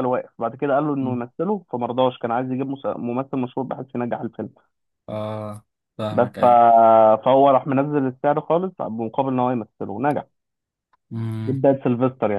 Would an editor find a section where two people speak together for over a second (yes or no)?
no